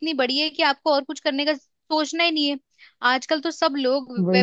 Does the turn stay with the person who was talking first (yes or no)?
yes